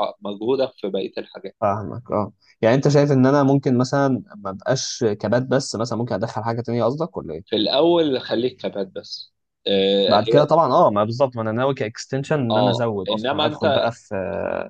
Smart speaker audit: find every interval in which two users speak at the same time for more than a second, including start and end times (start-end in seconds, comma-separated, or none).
12.5-13.9